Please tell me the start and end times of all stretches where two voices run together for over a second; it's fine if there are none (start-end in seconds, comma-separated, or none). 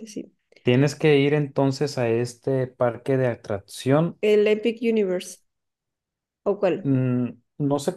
none